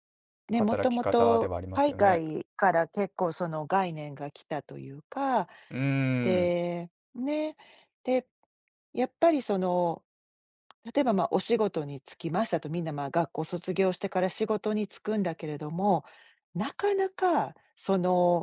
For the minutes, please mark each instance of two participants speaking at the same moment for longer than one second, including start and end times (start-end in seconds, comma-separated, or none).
0.5-2.2